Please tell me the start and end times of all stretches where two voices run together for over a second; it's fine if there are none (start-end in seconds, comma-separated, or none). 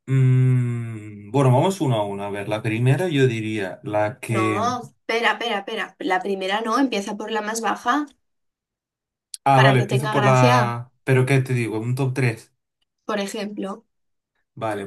9.5-10.8